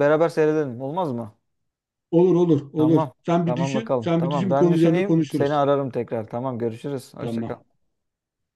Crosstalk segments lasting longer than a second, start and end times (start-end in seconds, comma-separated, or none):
2.8-5.6